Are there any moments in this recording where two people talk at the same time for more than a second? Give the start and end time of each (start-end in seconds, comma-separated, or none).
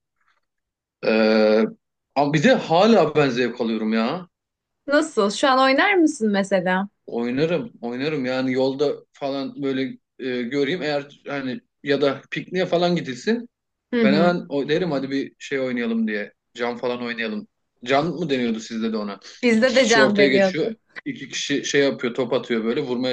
19.4-20.8